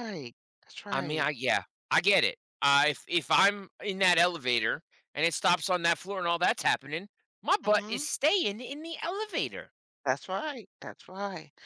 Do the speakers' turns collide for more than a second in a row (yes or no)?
no